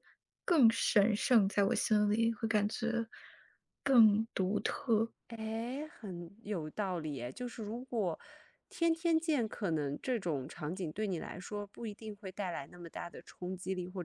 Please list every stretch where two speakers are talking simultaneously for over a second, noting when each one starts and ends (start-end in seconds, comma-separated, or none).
none